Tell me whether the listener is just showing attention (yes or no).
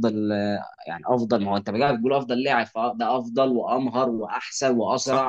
yes